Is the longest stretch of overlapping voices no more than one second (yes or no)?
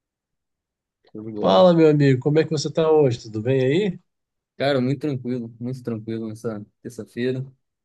yes